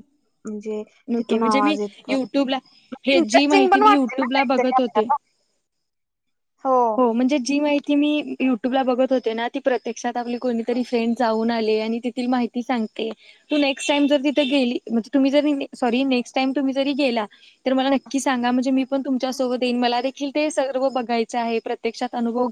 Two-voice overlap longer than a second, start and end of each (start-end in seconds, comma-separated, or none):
3.1-5.1